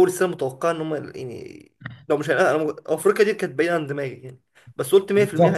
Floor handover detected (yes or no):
yes